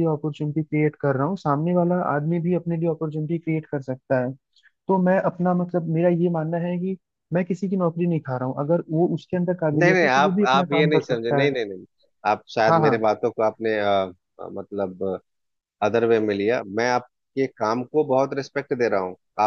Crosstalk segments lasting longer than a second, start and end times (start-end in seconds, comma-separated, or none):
9.7-11.6